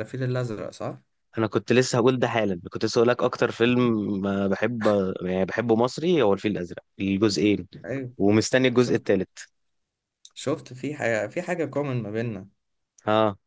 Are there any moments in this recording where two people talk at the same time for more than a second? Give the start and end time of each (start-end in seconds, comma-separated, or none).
none